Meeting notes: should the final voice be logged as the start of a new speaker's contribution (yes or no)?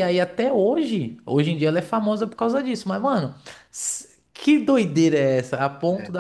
no